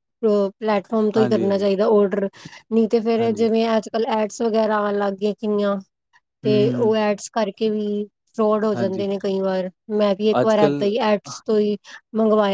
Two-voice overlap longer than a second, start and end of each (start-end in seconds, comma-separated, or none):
none